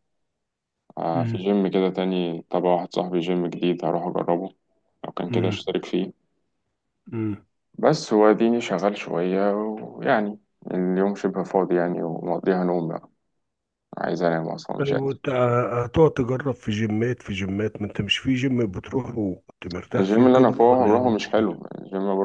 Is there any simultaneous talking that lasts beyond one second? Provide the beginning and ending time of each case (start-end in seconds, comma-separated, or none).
19.9-21.6